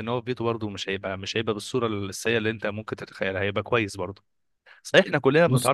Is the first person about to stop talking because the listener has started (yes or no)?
no